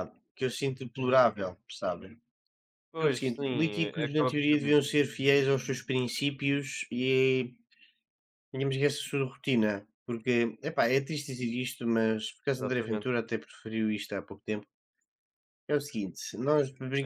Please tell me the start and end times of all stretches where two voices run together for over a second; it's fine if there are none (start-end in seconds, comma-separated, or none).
3.0-4.8